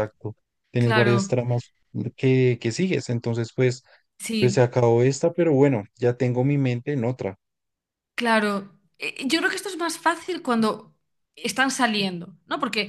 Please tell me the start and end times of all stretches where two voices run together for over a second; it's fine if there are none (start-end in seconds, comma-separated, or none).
none